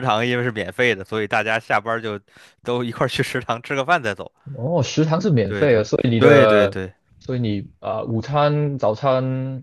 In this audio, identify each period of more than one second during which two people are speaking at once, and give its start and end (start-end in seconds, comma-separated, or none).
5.4-6.8